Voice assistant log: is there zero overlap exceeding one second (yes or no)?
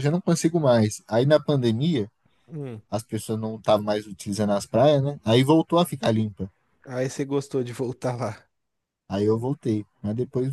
yes